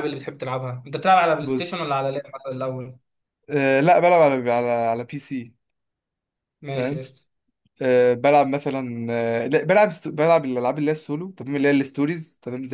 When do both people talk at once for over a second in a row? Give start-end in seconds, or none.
none